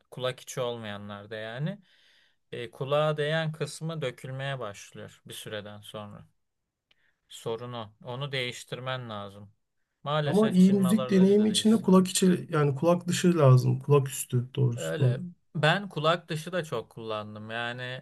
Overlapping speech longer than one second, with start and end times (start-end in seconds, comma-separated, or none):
10.2-12.1